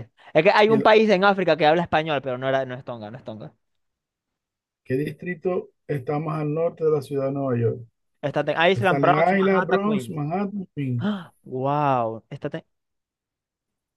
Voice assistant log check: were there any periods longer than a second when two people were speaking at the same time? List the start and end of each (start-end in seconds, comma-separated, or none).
8.8-10.2